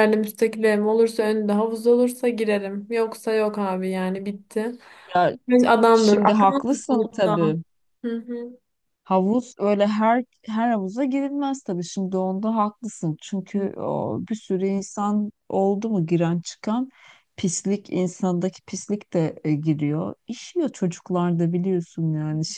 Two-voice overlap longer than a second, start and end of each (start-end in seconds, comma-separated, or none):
5.9-7.4